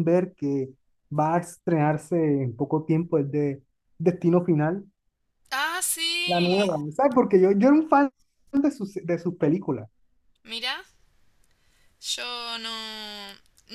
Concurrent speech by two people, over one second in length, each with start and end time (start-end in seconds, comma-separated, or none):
none